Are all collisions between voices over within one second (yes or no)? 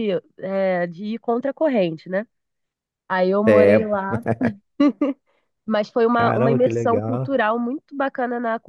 no